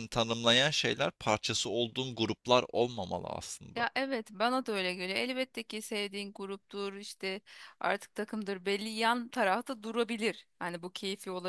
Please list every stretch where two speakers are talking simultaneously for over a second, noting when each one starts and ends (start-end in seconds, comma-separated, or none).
none